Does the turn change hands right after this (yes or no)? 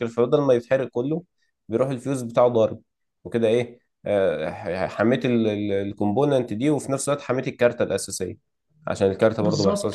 yes